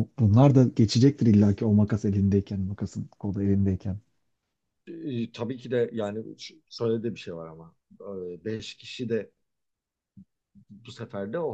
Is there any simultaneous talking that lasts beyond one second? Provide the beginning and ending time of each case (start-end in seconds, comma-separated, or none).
none